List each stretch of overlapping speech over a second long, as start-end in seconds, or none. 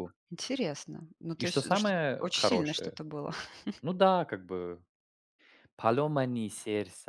1.4-3.0